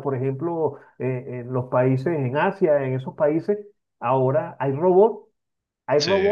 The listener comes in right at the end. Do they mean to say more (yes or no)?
no